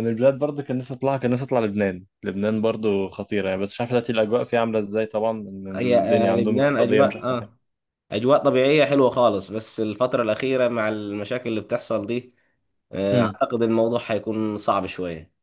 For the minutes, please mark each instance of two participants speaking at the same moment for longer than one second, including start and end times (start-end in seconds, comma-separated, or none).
5.8-7.5